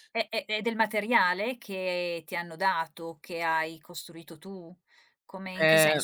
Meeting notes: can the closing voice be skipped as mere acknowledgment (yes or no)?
yes